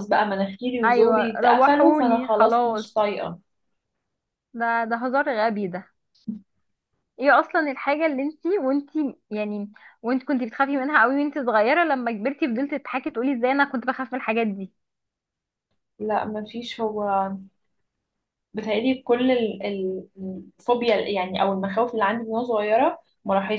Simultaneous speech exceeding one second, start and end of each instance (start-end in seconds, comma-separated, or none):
0.8-2.8